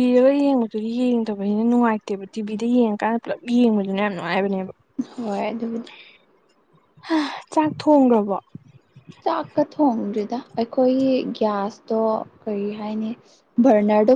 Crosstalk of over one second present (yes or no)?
no